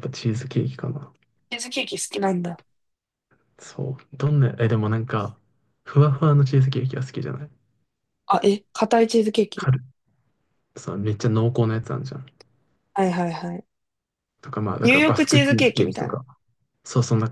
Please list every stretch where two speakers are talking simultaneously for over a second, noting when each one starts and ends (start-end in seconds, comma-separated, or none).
14.8-16.2